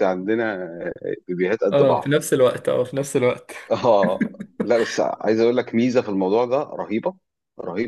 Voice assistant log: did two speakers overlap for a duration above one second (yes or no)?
no